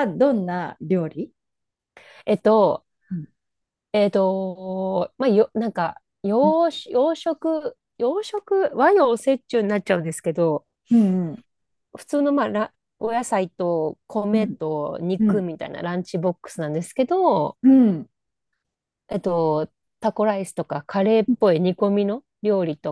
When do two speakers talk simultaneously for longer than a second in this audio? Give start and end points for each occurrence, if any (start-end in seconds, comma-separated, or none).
none